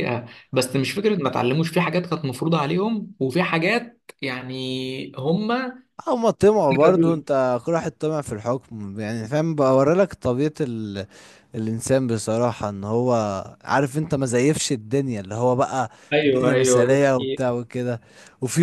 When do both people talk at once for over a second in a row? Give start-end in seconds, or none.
16.1-17.4